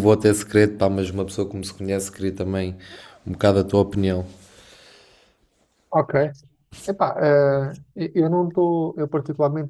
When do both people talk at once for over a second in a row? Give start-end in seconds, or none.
none